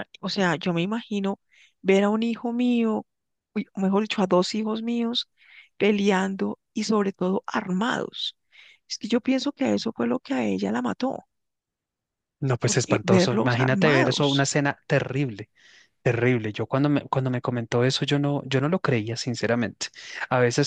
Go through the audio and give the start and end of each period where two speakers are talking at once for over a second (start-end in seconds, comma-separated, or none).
12.6-14.5